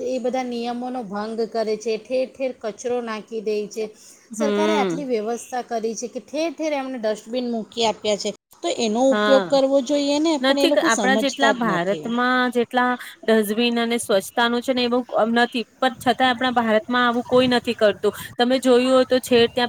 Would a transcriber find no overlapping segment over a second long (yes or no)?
no